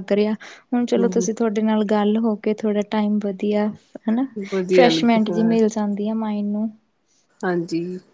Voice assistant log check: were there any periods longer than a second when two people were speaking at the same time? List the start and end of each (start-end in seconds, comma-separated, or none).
4.2-5.6